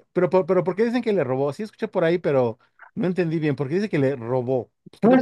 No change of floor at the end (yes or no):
no